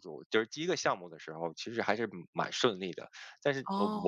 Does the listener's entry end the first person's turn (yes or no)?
no